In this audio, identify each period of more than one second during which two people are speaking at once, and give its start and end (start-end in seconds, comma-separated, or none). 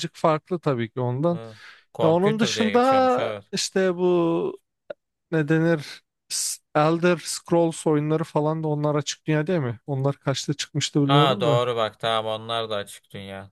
2.0-3.4